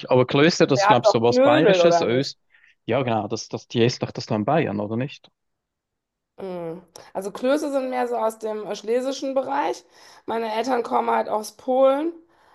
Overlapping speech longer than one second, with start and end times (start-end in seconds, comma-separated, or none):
0.8-2.3